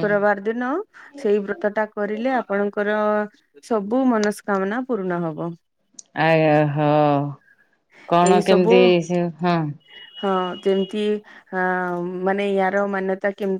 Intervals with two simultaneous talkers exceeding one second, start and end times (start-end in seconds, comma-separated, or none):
none